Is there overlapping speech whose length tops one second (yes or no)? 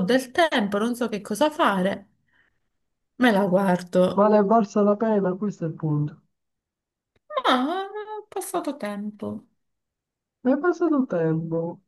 no